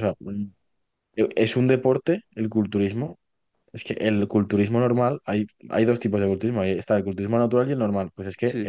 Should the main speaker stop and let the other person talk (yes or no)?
no